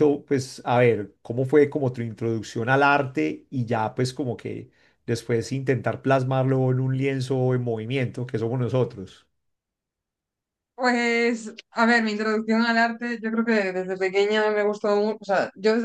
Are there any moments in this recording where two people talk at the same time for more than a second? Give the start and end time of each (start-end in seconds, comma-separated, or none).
none